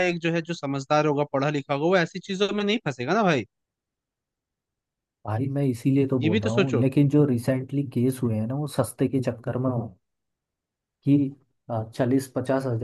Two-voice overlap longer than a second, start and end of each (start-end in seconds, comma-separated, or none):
none